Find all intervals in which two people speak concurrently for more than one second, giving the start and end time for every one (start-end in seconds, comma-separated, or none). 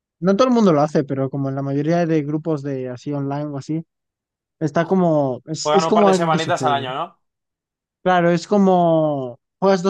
5.6-6.9